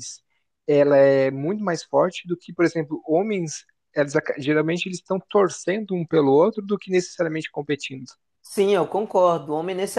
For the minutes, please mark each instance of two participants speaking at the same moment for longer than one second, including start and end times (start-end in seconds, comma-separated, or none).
none